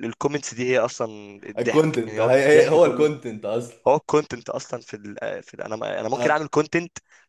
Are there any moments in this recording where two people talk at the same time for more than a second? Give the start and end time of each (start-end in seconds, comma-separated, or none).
1.6-3.1